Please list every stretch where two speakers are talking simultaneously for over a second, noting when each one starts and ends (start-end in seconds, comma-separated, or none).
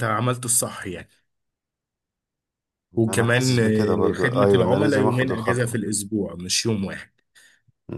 3.1-5.8